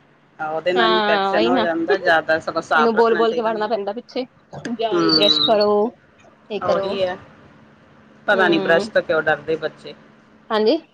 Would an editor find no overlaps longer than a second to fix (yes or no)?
no